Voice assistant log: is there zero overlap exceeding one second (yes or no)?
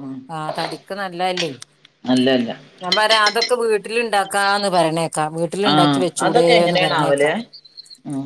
no